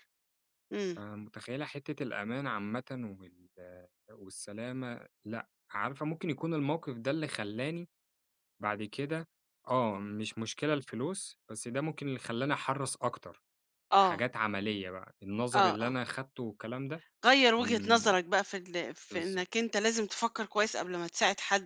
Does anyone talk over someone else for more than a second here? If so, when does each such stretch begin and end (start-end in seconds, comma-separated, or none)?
none